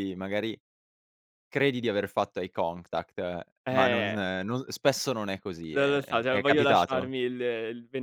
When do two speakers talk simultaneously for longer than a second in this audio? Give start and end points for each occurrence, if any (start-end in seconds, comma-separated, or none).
5.7-7.1